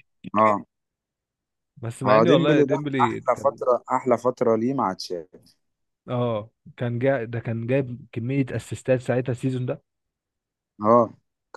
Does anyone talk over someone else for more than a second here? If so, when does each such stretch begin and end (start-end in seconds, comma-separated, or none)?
2.0-3.6